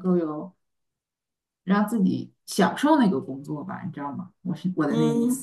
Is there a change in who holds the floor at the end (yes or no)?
yes